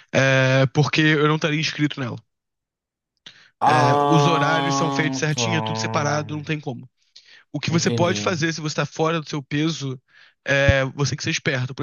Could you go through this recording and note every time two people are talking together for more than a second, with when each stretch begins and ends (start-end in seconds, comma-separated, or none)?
3.7-5.4